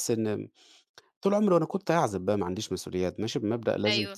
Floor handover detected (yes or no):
no